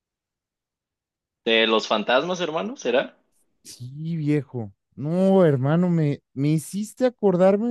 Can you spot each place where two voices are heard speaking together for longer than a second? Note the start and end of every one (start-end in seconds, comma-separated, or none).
none